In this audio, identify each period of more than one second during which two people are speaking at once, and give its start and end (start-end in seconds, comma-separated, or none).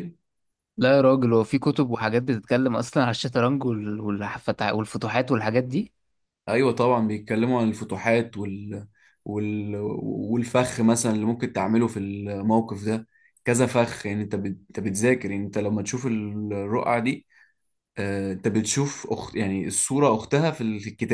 none